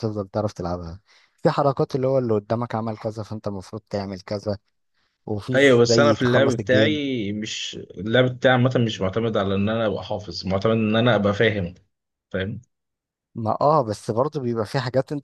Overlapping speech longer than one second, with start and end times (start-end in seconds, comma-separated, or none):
5.5-7.0